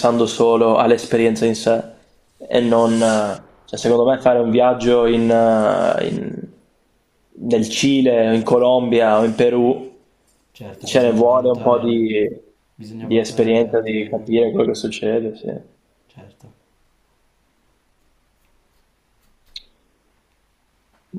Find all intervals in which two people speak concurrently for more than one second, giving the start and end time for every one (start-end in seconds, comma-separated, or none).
10.8-12.1, 12.9-14.3